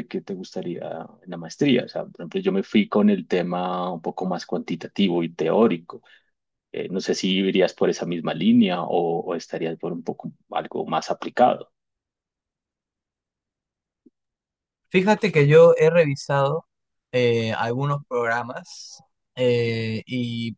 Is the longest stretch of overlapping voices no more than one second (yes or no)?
yes